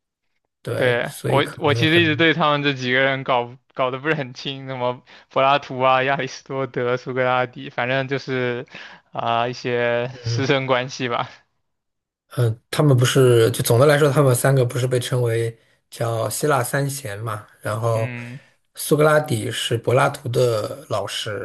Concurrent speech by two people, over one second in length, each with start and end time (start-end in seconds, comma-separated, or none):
0.8-2.2